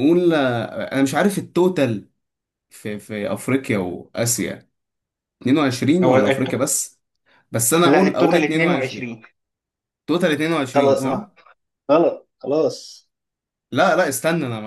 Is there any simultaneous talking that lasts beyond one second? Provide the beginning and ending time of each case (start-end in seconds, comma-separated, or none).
7.8-9.1